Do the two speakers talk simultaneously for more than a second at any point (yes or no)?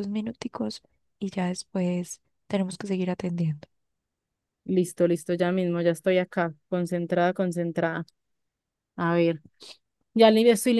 no